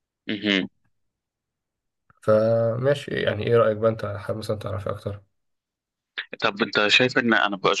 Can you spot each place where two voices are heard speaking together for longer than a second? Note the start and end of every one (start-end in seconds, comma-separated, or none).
none